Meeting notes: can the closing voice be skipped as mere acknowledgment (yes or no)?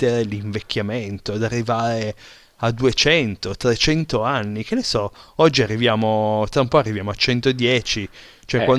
yes